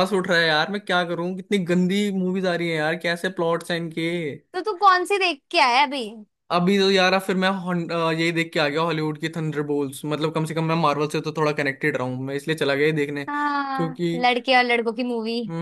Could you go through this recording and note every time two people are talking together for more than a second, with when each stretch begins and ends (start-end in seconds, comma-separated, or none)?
none